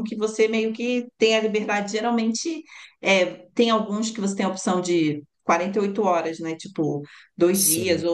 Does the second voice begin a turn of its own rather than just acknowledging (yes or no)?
no